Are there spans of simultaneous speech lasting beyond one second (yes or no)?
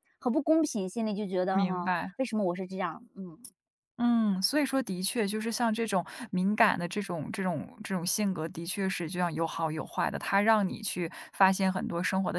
no